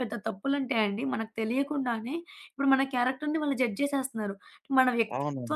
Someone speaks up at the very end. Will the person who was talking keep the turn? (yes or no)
yes